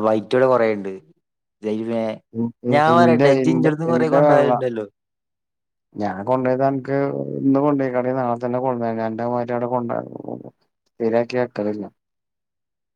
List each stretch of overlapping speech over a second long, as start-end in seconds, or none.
2.7-4.5